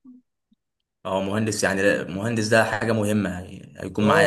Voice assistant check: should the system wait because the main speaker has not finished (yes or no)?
no